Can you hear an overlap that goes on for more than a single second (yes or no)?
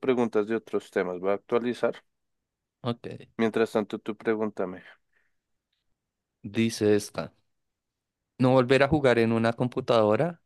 no